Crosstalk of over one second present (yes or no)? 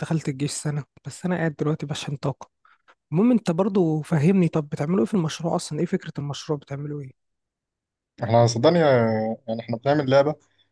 no